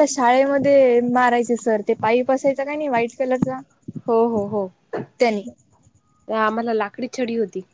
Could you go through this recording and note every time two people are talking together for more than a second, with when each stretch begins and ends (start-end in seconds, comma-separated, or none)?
none